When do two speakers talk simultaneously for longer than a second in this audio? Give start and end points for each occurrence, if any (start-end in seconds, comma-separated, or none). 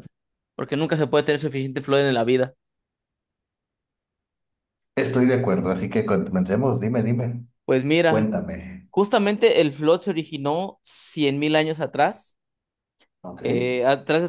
none